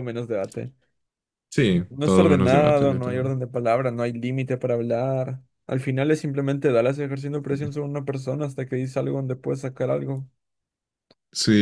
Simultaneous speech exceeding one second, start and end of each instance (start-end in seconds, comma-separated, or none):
1.9-3.3